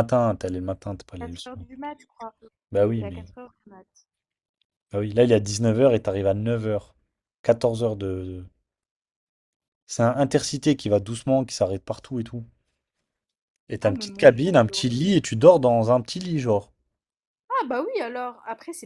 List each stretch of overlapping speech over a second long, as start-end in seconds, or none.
13.8-15.1